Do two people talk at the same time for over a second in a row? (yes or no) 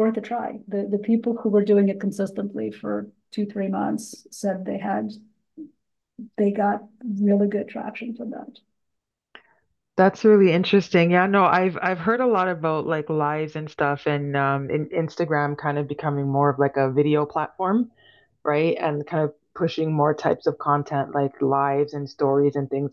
no